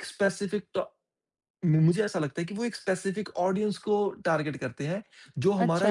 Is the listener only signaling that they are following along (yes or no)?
no